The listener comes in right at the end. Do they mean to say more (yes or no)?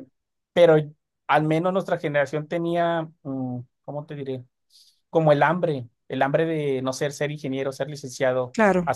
no